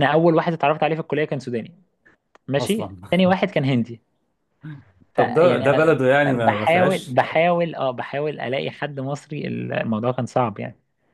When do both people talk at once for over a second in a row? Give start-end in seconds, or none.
5.2-7.2